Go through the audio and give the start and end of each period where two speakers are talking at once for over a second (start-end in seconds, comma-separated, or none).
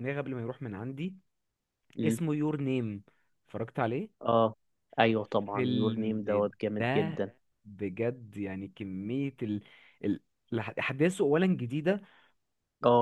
5.1-7.2